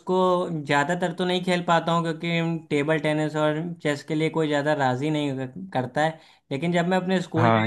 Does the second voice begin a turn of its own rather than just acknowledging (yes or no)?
no